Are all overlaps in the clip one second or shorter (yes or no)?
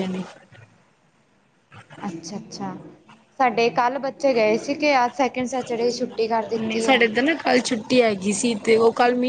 yes